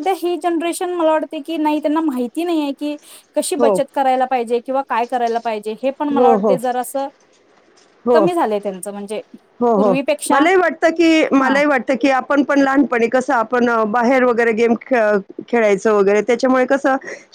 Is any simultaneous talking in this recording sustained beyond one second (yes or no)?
no